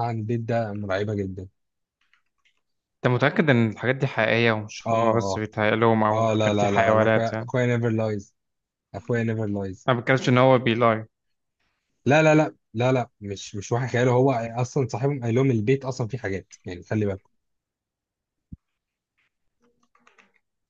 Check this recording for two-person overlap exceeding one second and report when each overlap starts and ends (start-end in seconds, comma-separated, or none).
6.1-7.5